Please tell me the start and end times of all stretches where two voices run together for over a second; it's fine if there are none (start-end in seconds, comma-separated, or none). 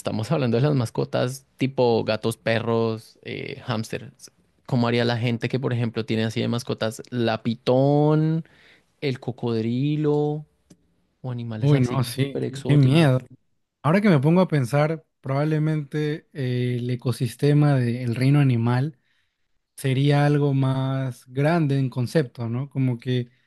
11.6-13.2